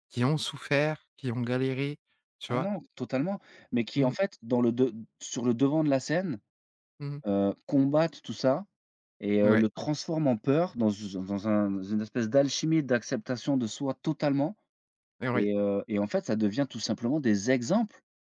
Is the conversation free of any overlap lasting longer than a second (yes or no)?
yes